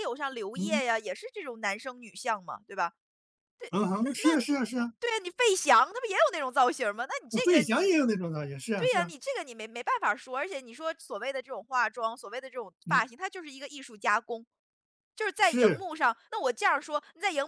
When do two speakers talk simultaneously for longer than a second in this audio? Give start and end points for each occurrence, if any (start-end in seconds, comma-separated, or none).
none